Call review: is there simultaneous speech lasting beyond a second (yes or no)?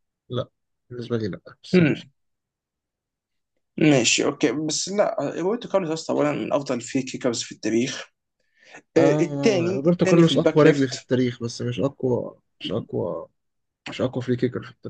yes